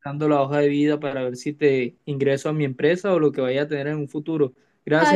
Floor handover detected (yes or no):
yes